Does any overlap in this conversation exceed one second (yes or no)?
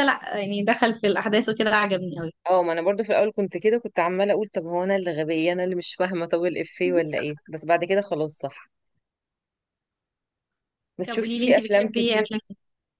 yes